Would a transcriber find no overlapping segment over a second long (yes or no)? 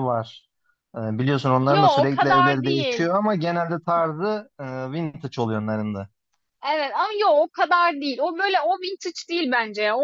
no